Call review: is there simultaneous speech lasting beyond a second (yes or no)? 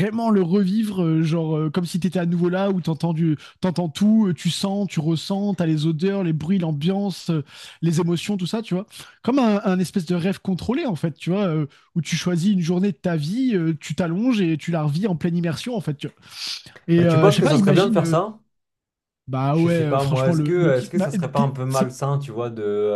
yes